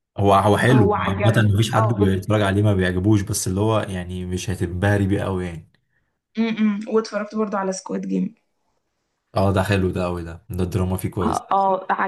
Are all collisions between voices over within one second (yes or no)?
no